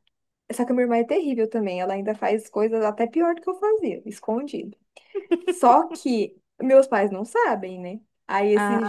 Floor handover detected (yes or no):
no